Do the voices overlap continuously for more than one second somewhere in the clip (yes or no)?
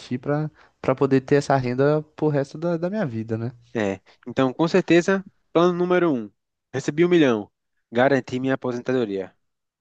no